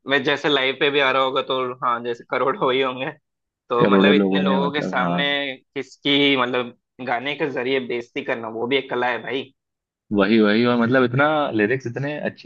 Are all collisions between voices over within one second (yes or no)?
no